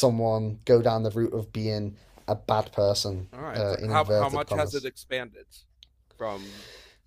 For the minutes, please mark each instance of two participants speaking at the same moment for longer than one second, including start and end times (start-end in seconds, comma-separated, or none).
3.3-4.9